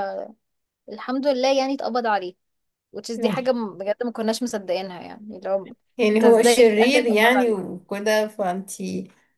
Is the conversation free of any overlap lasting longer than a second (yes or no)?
no